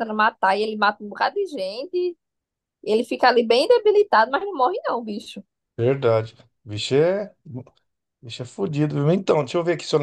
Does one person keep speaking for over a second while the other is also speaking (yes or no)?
no